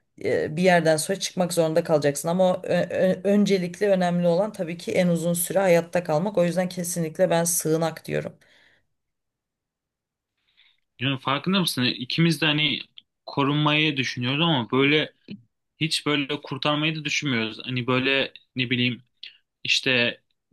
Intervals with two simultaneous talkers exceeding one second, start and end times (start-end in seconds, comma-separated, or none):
none